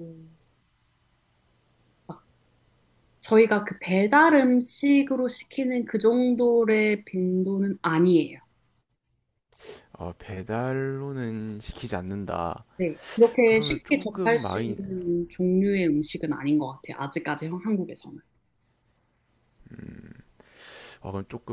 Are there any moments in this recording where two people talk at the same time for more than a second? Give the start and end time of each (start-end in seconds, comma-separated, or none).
13.4-14.8